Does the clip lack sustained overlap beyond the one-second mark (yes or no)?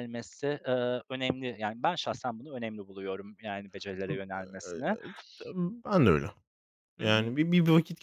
yes